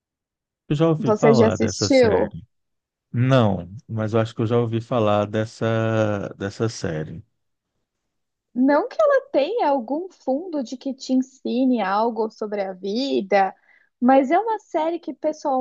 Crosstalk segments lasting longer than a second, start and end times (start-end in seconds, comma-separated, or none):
1.0-2.4